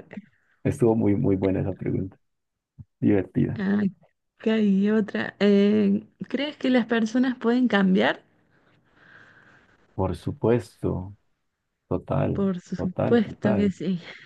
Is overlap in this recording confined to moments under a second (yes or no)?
no